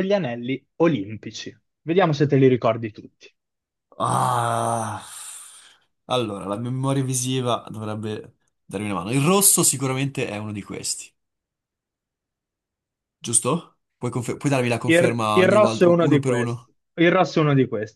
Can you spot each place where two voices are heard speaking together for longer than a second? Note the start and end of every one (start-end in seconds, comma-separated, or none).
14.8-16.7